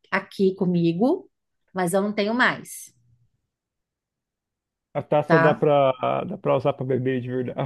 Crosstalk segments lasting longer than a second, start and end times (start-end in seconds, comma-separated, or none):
none